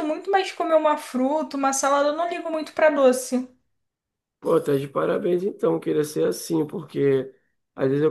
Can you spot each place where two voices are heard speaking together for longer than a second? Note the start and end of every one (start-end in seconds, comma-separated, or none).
none